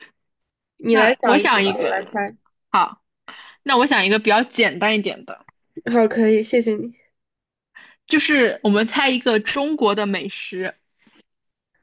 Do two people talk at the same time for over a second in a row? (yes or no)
yes